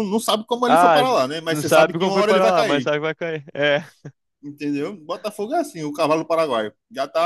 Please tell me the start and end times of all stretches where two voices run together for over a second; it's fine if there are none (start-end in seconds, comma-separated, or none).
0.7-2.9